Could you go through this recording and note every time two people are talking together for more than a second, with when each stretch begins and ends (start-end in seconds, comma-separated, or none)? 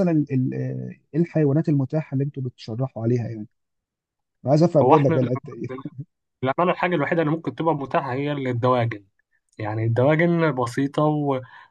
none